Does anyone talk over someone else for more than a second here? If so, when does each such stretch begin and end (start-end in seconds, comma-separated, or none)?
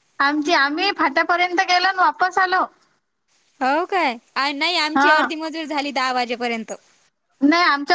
none